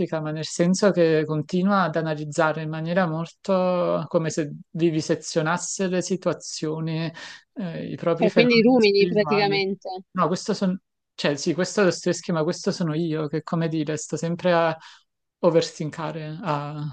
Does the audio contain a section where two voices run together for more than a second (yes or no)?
yes